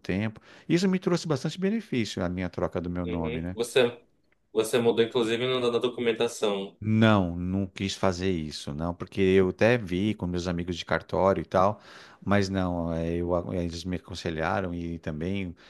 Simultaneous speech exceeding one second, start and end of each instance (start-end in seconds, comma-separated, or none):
none